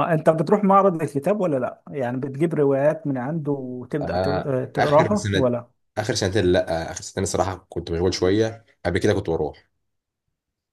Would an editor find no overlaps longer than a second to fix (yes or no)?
no